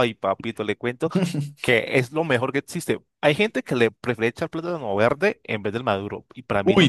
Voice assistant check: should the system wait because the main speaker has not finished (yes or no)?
yes